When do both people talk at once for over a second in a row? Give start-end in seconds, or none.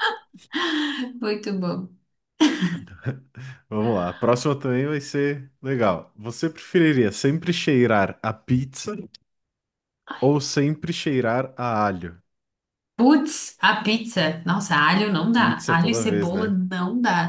15.3-16.6